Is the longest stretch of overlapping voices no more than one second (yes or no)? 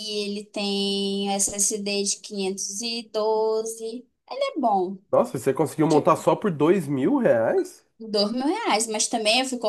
yes